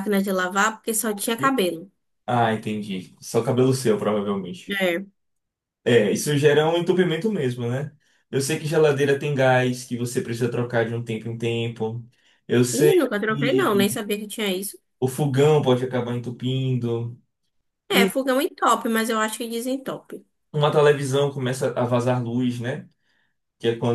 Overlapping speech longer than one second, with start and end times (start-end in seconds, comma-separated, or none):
12.7-14.0